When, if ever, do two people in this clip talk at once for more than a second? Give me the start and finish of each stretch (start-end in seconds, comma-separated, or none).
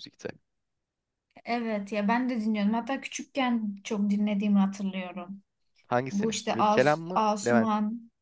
6.1-7.7